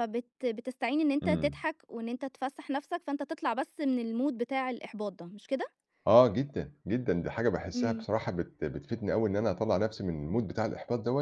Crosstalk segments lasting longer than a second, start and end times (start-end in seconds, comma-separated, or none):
none